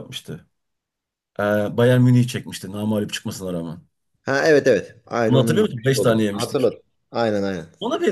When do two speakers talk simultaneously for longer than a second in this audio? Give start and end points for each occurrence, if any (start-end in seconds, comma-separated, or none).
5.3-6.7